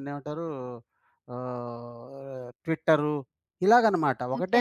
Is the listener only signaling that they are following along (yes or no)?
no